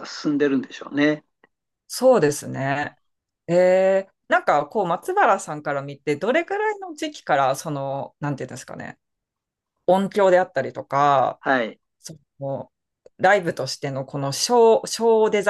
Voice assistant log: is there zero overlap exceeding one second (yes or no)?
yes